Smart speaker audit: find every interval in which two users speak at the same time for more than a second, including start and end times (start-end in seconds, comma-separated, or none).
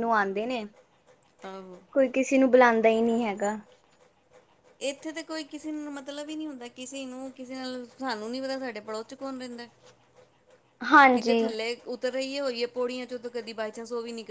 none